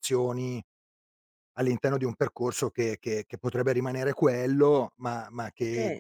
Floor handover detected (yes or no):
no